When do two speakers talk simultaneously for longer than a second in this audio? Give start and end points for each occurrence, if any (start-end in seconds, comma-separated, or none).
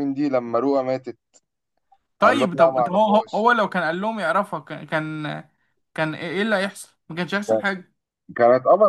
2.2-3.5